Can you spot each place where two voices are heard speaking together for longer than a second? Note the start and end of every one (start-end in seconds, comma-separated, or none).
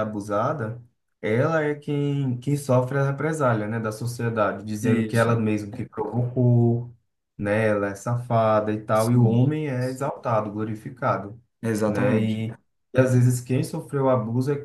none